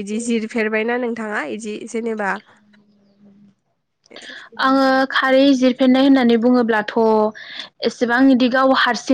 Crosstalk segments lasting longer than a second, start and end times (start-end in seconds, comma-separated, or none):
none